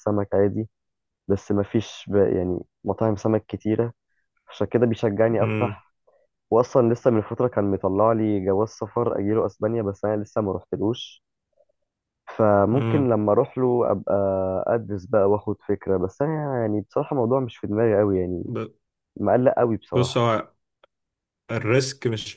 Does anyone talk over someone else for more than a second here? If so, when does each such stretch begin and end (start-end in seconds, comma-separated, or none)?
none